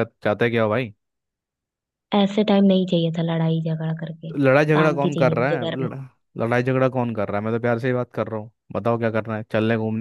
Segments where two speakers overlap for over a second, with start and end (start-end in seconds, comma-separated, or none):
4.3-5.9